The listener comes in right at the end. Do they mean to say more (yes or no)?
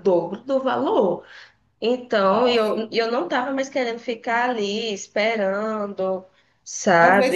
yes